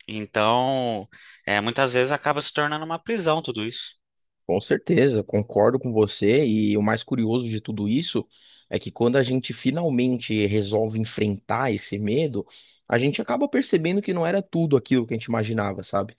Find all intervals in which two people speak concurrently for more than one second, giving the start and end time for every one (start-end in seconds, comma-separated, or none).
none